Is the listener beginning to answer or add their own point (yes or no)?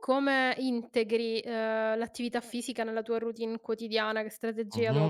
yes